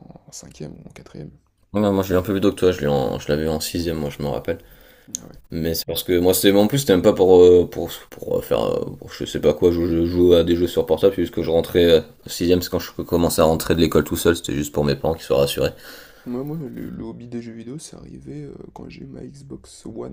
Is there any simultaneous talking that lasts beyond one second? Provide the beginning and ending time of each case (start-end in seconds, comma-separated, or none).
none